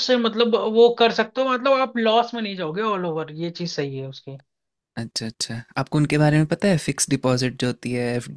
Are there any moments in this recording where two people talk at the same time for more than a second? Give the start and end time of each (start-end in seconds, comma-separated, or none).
none